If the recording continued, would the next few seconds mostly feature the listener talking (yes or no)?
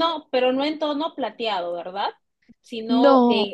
no